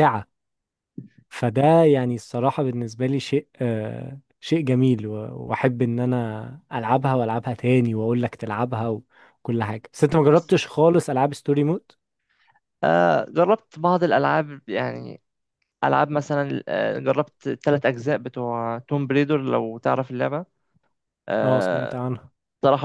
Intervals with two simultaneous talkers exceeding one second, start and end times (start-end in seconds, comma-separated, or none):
none